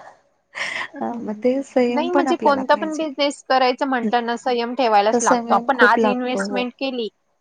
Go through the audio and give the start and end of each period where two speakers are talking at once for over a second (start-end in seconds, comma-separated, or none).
1.0-3.4, 5.1-6.6